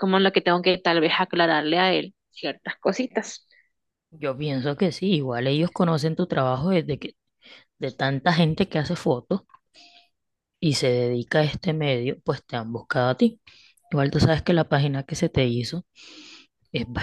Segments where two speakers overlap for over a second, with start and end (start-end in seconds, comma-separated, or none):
none